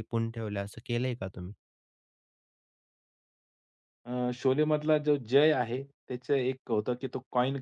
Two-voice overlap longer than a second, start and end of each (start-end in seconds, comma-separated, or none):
none